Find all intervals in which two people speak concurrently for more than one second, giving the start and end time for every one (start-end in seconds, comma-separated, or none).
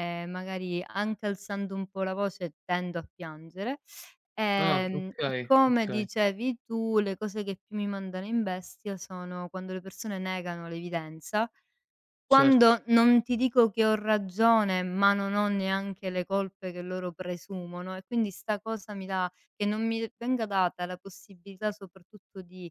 4.6-6.1